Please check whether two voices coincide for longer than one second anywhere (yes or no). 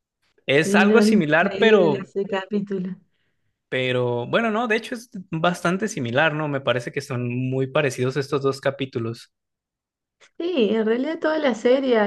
yes